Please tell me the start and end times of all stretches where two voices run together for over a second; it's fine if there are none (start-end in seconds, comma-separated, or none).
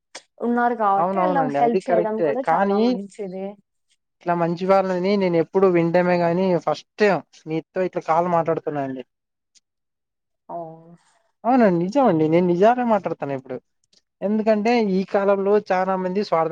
1.0-2.8